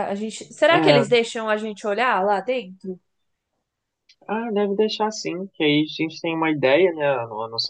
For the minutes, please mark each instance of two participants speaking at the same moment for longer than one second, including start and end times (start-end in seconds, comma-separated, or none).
none